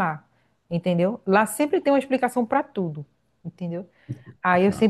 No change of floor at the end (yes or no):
yes